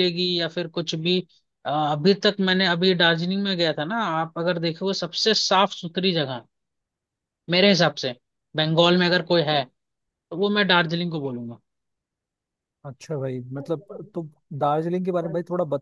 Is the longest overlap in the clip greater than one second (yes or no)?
no